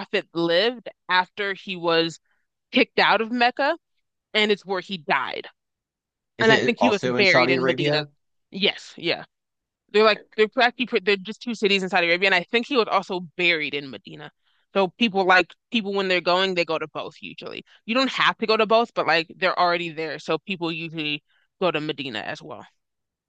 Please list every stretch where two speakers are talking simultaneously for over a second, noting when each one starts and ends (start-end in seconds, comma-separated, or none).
6.4-8.0